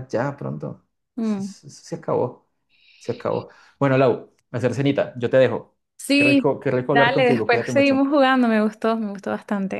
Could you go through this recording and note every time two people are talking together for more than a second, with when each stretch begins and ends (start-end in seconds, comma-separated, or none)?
6.1-8.1